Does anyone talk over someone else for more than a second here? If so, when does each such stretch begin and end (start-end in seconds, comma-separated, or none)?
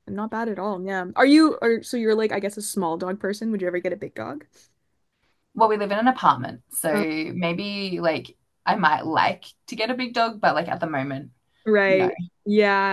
none